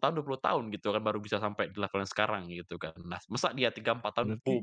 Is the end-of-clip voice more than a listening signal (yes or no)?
no